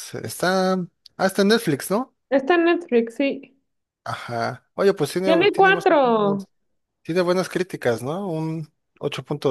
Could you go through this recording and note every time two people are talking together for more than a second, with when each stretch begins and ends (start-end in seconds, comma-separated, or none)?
5.2-6.4